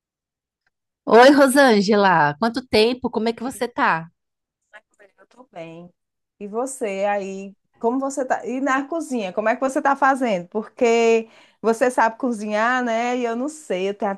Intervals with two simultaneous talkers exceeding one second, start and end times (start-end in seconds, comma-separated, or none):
none